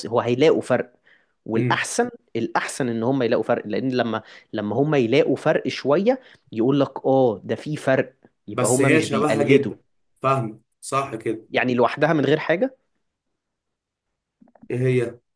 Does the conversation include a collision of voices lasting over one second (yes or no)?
yes